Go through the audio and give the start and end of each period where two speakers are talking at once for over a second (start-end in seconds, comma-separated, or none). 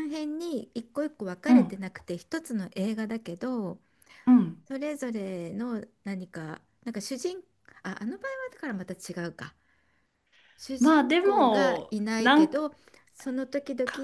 10.8-12.6